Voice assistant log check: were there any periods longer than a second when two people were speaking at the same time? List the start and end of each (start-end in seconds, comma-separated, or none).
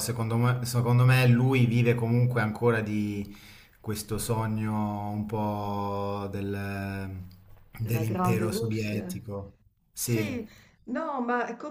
7.8-9.0